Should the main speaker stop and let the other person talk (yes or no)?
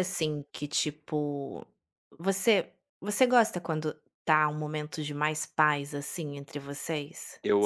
yes